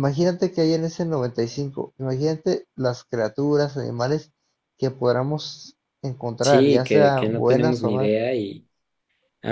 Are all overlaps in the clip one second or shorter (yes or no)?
no